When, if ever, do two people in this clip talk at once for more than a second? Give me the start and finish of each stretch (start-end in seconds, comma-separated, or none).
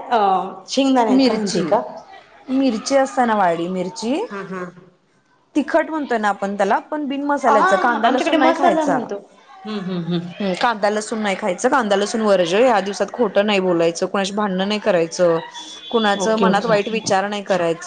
7.5-9.0